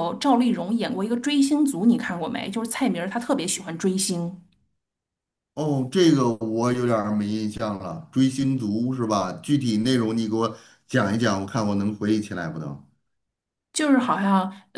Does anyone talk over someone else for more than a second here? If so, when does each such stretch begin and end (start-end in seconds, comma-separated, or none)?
none